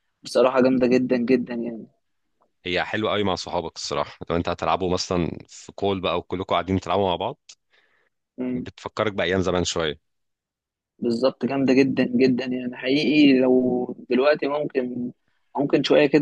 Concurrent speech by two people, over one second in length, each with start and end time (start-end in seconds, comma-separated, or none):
none